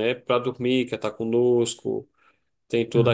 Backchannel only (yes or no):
yes